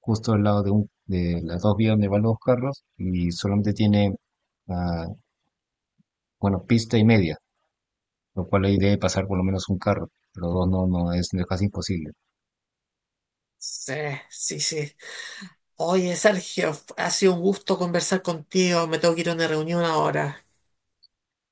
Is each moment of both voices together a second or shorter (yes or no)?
yes